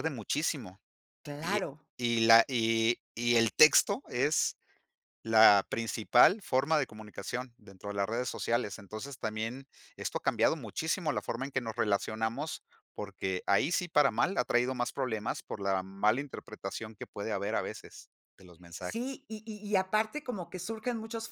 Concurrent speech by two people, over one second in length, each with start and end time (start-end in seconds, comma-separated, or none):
none